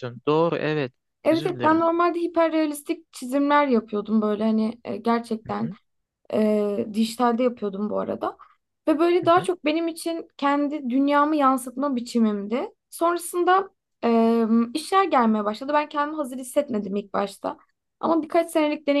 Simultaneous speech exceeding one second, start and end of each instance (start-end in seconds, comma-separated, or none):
none